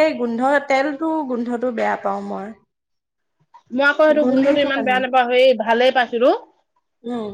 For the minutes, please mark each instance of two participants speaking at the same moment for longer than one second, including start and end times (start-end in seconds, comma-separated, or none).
none